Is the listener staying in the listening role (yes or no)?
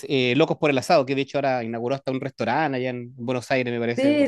no